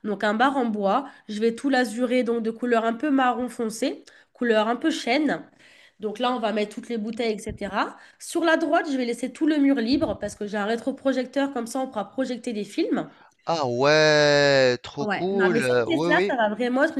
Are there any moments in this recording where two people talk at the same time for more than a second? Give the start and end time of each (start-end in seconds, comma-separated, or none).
15.0-16.3